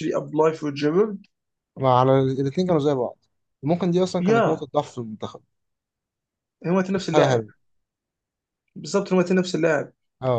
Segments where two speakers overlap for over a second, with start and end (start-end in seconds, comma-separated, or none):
none